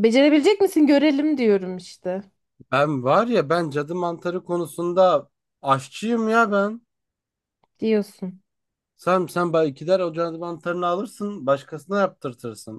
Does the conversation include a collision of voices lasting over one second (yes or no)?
no